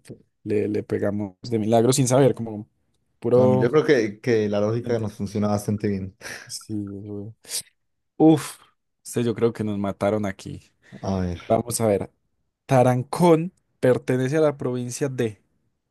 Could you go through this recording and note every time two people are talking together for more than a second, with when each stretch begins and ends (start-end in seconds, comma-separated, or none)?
none